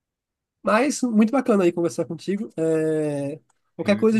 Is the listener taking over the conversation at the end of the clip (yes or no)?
no